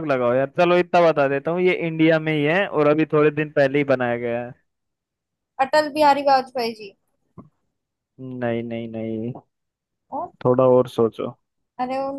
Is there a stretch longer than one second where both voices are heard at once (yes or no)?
no